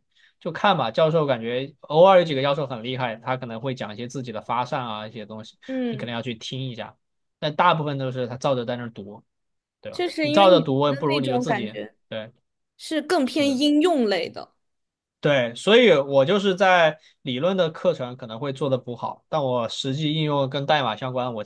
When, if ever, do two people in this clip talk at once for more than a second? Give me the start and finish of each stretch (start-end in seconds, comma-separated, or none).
9.9-11.9